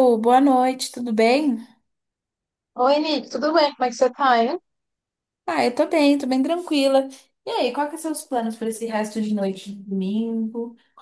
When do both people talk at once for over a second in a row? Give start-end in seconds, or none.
none